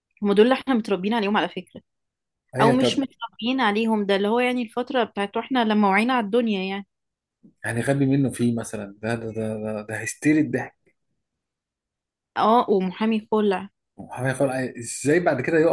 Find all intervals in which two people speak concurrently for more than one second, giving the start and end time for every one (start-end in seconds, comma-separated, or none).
none